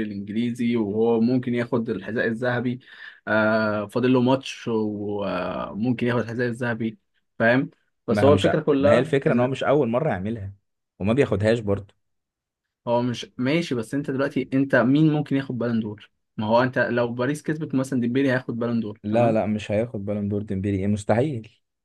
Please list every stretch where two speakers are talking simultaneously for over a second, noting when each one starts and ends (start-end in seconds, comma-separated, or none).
8.1-9.5